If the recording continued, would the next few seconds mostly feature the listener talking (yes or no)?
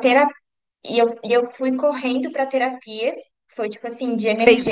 yes